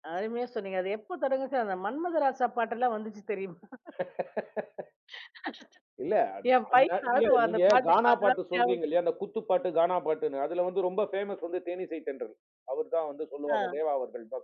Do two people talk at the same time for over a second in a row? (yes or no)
yes